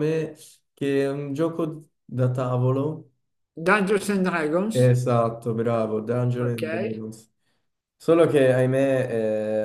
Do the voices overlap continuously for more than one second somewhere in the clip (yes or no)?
no